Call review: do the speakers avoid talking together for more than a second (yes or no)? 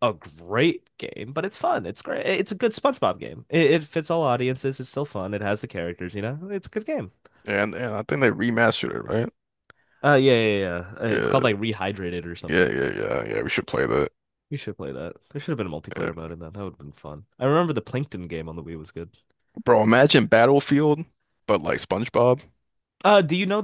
yes